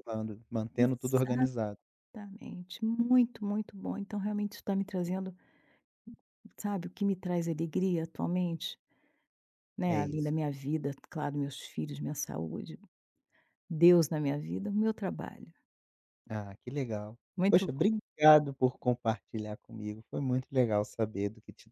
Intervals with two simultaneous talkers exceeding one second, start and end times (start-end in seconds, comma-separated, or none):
none